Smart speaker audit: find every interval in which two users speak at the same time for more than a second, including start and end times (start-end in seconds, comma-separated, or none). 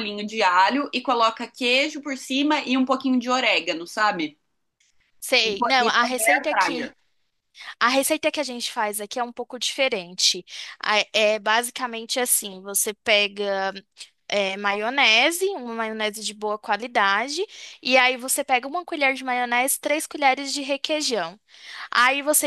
5.5-6.9